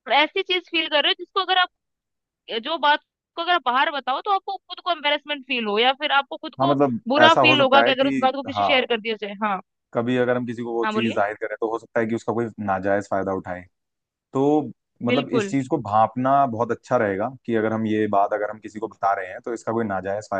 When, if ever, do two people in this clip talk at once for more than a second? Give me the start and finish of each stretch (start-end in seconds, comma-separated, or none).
6.6-8.7